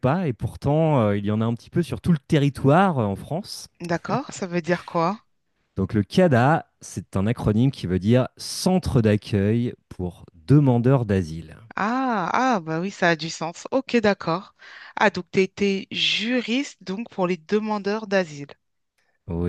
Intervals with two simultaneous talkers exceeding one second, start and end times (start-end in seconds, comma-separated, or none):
none